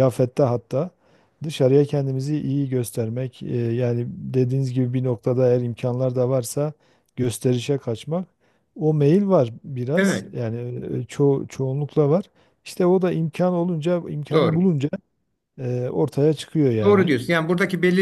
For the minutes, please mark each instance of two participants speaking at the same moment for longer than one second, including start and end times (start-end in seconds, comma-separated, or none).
none